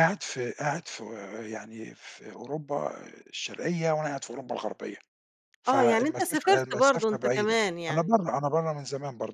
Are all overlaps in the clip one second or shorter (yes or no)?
no